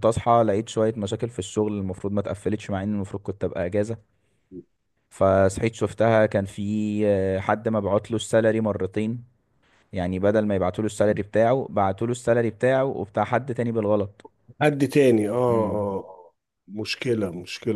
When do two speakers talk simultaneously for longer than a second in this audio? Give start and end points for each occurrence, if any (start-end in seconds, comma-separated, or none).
none